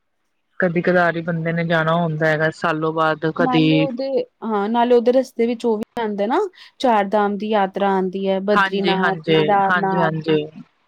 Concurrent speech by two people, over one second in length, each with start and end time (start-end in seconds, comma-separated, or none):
8.6-10.1